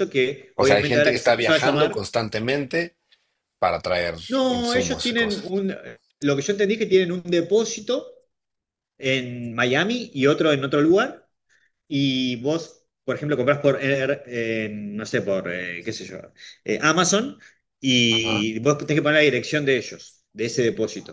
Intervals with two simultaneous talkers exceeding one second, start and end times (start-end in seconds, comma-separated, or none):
0.5-2.1, 4.3-5.5